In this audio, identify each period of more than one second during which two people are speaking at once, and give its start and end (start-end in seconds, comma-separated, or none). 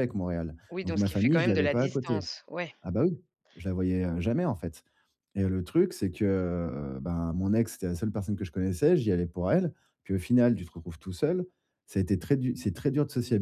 0.7-2.3